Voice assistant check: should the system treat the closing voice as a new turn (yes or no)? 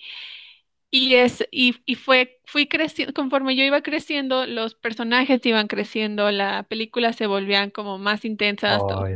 no